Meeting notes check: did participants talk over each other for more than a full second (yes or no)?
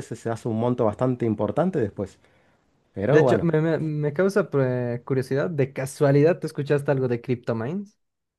no